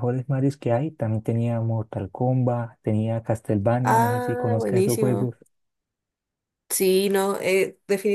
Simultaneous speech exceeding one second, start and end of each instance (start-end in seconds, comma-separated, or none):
3.8-5.3